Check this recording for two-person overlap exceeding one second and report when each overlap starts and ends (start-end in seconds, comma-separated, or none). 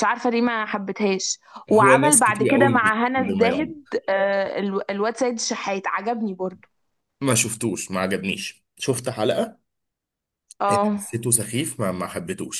1.7-3.8